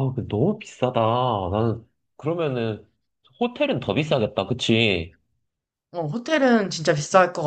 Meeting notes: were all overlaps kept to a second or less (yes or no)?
yes